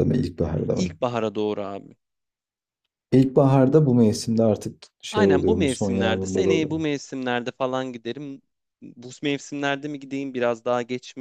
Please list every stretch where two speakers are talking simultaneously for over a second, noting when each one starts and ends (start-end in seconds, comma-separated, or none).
5.1-6.8